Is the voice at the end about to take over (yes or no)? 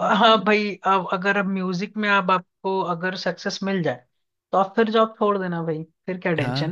yes